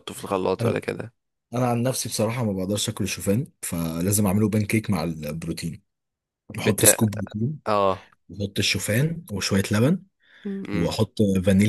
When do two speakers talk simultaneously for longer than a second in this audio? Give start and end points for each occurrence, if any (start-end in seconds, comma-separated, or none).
none